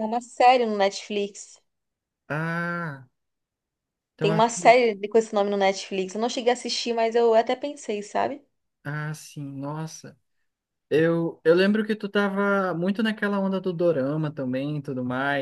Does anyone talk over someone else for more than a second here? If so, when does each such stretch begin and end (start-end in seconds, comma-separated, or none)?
none